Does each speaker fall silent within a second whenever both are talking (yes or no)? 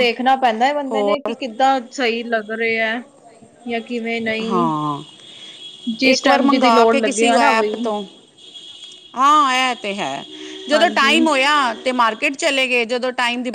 no